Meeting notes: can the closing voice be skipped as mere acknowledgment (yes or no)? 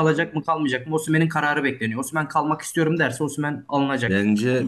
no